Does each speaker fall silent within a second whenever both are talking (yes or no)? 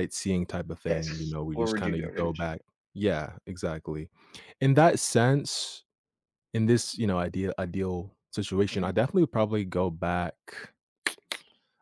no